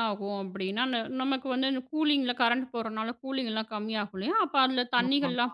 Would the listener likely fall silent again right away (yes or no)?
yes